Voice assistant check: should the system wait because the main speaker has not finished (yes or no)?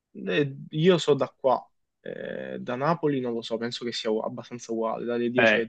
no